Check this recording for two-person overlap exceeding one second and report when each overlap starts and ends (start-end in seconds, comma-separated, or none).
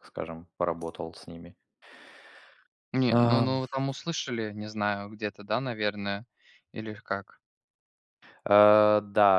none